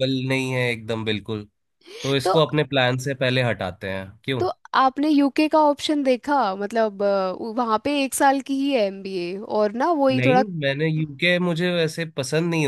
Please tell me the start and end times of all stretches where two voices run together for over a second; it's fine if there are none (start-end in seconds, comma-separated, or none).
none